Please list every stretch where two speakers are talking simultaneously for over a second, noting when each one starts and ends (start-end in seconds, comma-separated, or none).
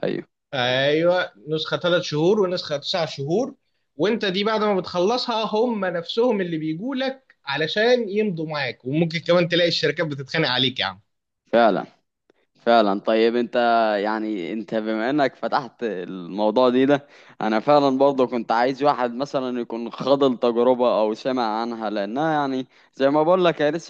none